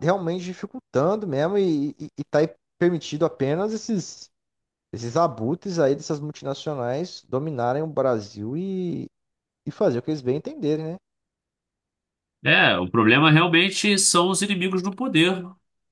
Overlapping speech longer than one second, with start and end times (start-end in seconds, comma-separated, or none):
none